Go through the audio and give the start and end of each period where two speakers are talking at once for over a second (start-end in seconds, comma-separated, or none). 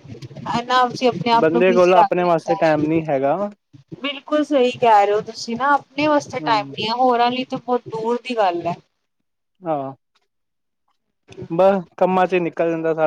1.4-3.0